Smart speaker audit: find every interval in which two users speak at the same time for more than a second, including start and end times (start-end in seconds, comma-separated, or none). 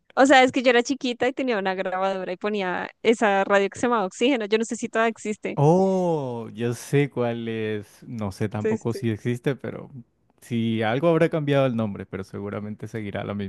none